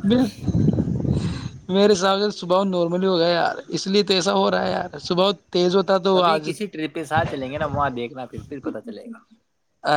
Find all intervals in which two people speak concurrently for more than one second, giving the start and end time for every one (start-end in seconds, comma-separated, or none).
none